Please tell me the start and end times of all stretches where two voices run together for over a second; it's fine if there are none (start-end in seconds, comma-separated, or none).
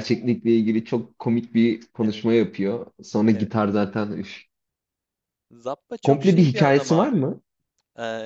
6.0-7.2